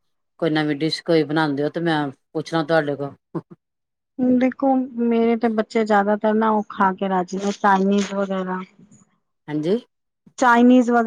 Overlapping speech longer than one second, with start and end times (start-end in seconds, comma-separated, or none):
none